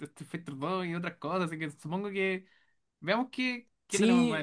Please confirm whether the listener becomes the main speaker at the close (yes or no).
yes